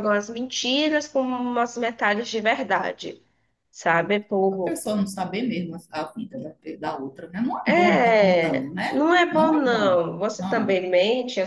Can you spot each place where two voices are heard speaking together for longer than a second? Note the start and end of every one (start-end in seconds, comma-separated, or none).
7.6-10.8